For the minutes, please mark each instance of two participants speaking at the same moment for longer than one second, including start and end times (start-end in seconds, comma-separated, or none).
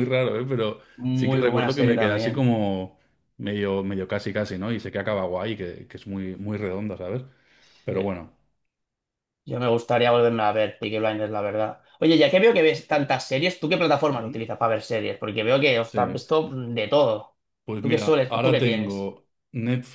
1.0-2.5, 17.8-19.1